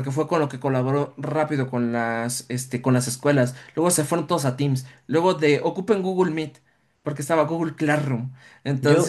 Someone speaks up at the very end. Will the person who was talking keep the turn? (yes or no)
no